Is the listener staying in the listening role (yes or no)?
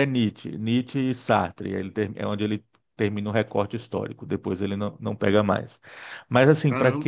yes